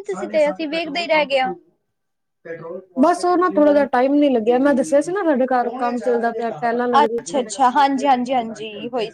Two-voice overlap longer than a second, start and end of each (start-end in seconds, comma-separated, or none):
none